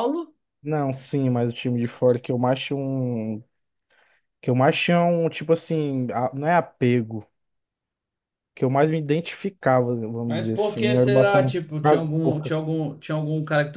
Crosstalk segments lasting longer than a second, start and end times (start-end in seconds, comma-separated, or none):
10.3-12.6